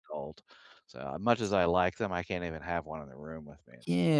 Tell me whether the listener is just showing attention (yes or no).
no